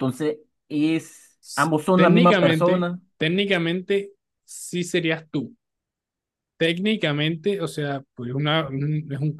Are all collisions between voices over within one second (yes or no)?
no